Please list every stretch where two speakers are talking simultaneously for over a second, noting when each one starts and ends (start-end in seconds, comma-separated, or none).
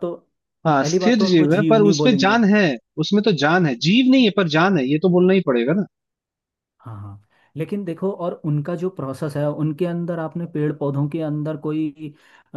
0.8-2.4